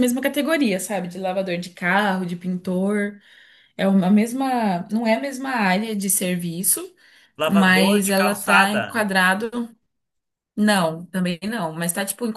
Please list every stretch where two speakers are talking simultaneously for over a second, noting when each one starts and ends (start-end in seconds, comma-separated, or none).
7.5-9.1